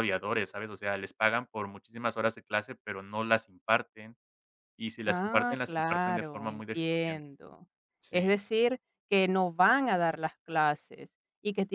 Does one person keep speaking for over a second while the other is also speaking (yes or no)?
yes